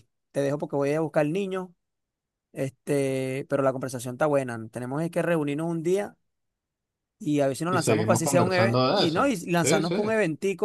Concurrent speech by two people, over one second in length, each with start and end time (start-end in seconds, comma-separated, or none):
7.7-10.0